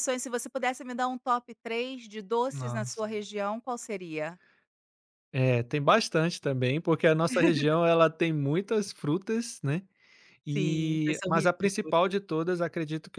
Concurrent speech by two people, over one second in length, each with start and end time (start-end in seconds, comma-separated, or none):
10.5-12.2